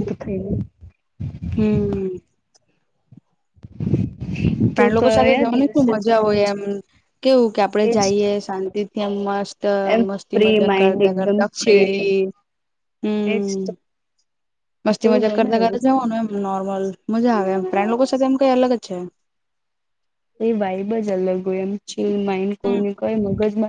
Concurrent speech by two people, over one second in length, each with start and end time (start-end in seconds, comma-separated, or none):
4.8-6.6